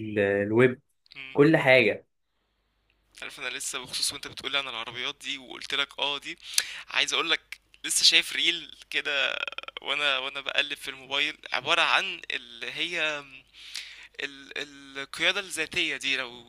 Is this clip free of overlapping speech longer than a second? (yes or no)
yes